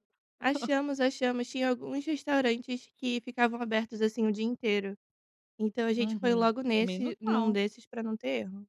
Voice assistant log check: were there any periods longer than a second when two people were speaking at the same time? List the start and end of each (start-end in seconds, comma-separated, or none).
5.9-7.6